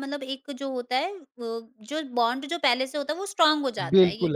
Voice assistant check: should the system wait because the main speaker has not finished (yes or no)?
no